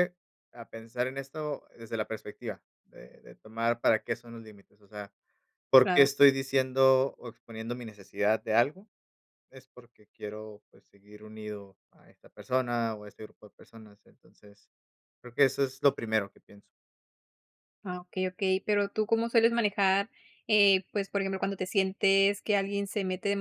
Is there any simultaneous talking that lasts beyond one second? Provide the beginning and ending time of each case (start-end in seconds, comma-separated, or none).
none